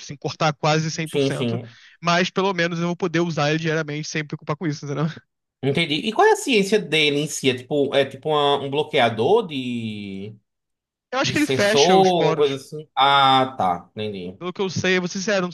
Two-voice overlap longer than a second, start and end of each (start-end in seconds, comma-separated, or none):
11.2-12.6